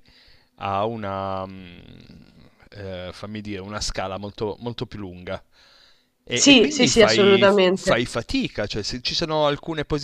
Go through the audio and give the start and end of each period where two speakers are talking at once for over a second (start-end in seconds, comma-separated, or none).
6.3-8.0